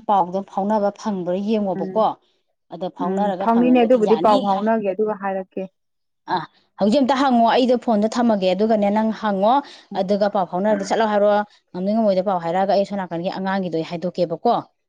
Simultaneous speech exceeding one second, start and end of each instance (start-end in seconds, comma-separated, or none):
3.0-4.6